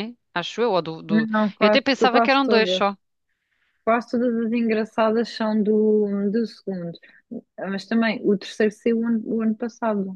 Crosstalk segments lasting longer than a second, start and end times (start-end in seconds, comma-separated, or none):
1.1-3.0